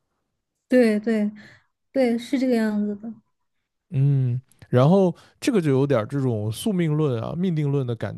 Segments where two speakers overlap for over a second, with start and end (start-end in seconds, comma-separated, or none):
none